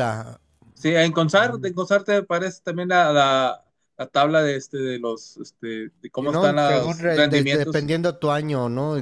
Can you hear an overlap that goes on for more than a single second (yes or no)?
yes